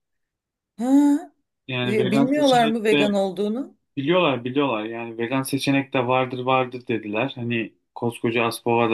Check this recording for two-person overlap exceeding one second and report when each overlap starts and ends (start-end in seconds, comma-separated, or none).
1.8-3.0